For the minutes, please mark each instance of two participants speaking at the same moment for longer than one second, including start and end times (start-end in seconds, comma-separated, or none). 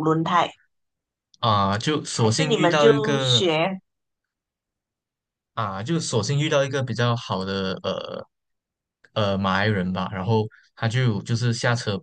2.1-3.5